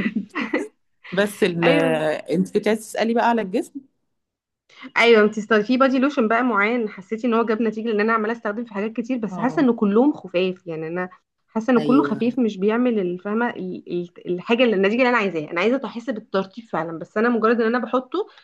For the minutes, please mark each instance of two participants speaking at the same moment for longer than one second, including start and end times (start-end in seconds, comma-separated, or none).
none